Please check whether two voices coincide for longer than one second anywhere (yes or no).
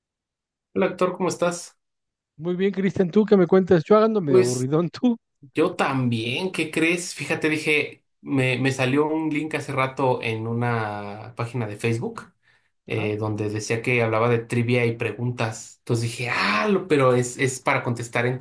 no